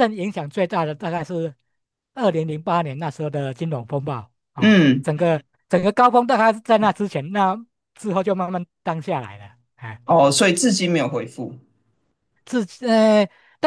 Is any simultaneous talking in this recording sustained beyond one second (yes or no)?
no